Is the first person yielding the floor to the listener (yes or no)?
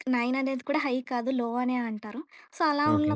no